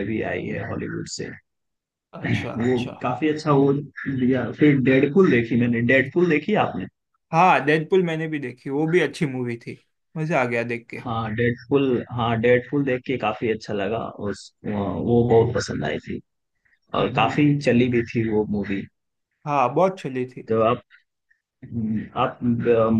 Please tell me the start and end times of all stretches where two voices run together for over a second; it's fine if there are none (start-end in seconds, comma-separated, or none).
none